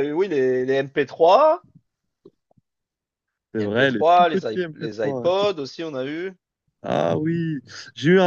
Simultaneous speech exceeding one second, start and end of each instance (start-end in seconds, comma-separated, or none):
3.5-5.3